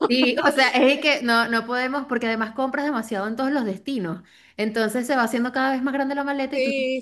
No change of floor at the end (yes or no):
no